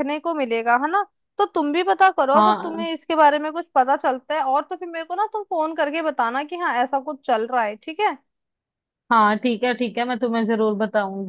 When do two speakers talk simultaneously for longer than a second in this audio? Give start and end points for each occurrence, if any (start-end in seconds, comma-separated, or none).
none